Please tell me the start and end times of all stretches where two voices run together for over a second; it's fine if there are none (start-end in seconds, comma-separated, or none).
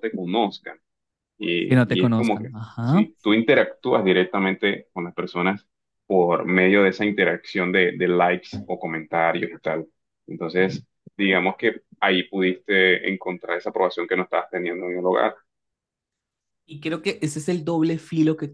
1.6-3.1